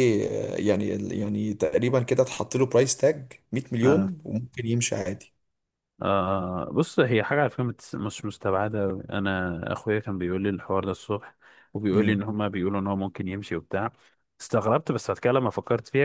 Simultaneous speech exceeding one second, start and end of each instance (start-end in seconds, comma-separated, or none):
none